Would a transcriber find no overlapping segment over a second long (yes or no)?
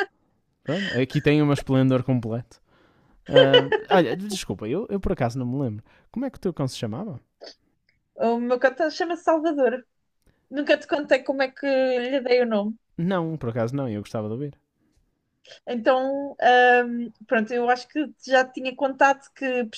yes